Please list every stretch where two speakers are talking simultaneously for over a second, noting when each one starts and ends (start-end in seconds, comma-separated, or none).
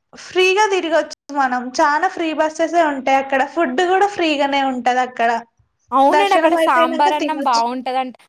6.2-7.6